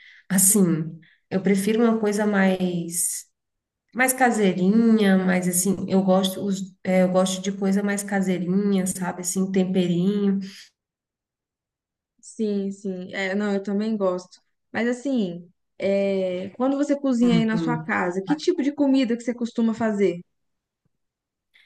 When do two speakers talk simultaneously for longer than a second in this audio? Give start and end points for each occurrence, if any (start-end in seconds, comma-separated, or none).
none